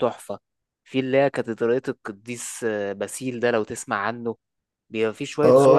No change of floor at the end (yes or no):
no